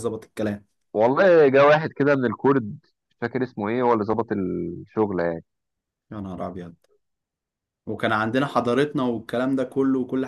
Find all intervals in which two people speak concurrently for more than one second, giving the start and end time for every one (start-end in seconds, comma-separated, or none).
none